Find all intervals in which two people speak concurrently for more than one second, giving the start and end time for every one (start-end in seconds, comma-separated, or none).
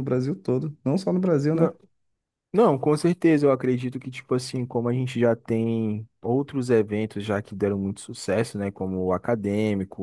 none